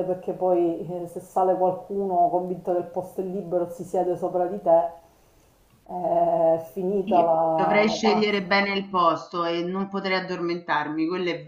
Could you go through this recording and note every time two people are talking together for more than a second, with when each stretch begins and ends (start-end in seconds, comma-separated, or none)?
7.0-8.5